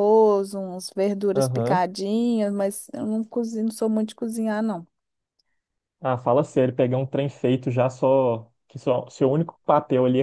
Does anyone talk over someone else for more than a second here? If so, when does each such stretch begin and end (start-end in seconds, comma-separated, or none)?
none